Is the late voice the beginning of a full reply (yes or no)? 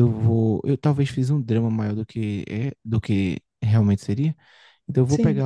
no